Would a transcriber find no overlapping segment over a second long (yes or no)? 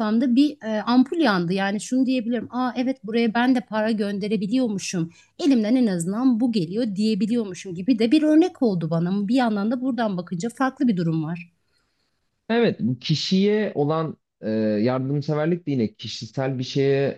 yes